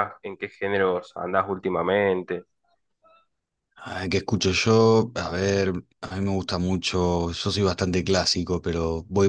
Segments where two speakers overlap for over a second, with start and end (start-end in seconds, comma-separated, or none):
none